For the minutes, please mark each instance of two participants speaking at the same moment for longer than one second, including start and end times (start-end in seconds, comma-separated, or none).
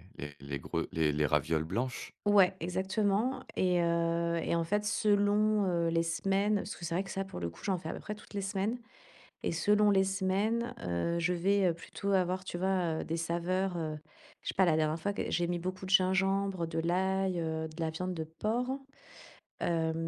none